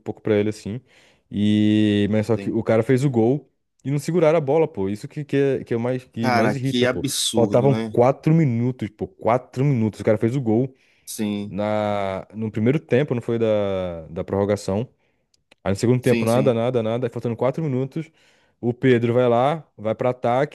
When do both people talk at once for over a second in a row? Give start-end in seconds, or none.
6.2-8.0